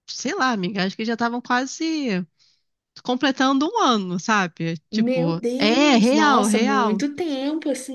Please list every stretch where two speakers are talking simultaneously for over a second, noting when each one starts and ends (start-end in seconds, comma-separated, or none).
4.9-7.0